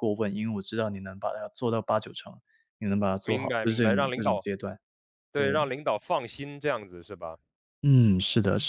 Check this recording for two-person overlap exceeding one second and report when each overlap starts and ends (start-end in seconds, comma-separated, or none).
3.2-4.5